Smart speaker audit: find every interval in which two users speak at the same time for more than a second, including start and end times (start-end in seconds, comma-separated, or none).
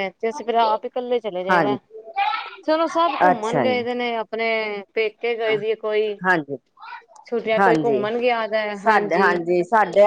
none